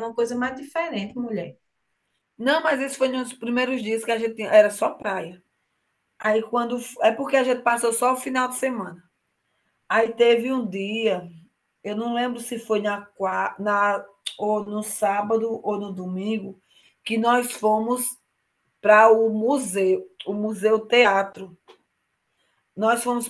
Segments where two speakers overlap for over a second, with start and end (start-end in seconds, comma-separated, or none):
none